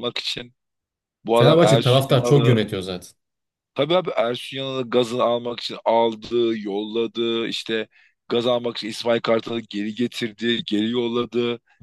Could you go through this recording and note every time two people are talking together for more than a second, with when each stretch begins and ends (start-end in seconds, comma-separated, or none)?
1.3-2.6